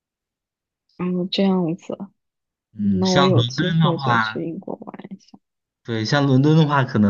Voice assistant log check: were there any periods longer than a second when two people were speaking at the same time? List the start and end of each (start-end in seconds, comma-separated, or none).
2.8-4.5